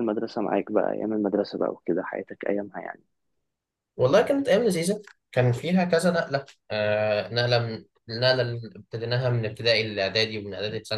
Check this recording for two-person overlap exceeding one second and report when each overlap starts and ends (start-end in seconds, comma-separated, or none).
none